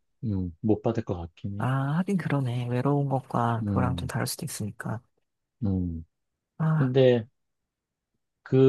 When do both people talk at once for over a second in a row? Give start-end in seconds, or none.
none